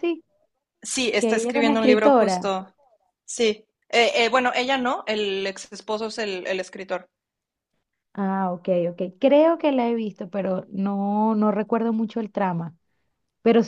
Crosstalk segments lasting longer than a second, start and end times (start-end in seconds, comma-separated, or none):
1.2-2.5